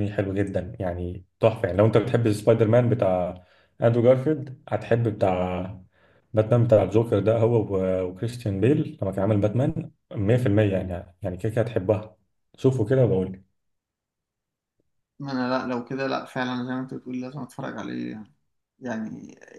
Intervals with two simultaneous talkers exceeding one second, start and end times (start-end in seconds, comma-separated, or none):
none